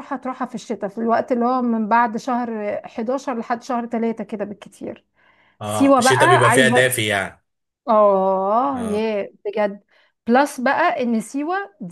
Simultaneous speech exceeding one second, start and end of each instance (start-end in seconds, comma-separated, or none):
5.6-6.9